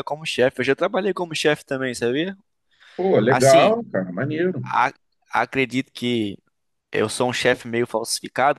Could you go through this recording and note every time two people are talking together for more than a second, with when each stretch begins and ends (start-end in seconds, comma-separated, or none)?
none